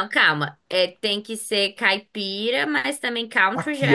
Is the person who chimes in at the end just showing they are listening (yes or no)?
no